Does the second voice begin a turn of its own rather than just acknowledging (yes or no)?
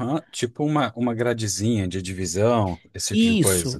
yes